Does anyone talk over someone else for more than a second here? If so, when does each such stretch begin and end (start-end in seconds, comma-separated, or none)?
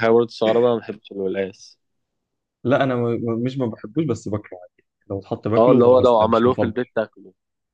5.6-6.8